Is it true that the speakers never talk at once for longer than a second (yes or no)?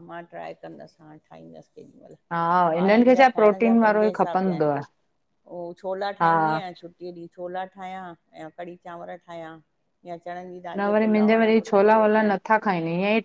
no